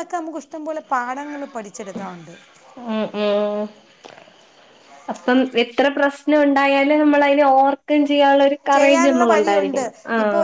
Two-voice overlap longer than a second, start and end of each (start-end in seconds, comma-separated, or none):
none